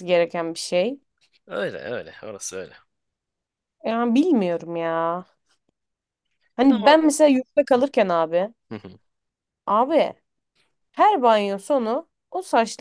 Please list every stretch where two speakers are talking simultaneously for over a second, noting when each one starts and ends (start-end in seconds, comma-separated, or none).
none